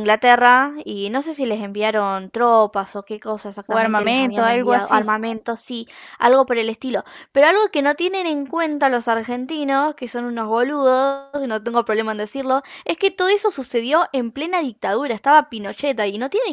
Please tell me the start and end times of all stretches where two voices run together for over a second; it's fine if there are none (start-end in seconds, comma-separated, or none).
3.7-5.2